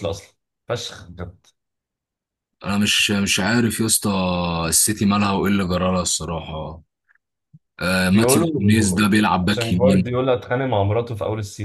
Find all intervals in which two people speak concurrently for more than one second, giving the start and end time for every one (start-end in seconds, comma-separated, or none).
8.1-10.1